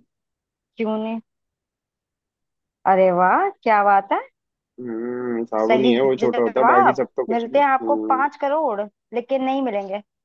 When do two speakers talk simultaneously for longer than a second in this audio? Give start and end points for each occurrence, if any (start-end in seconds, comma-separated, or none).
5.6-8.2